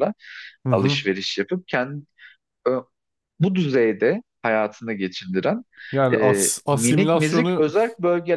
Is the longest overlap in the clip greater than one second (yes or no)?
yes